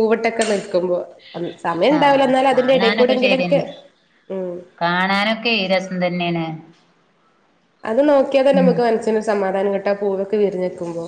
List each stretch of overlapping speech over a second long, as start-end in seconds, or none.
2.0-3.6